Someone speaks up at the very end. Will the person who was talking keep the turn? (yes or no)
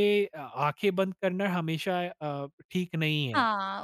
no